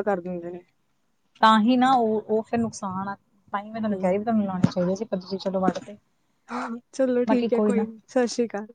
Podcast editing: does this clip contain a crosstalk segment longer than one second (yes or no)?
no